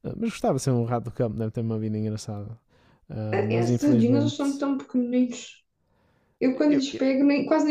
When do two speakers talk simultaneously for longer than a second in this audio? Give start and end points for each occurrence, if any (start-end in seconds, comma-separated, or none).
3.3-4.6